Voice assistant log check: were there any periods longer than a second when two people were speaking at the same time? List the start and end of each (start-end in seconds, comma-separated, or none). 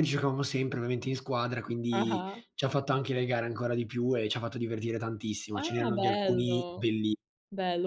5.5-6.9